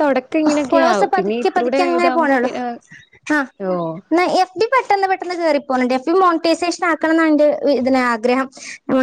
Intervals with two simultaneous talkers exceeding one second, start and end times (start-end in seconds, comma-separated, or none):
0.7-2.5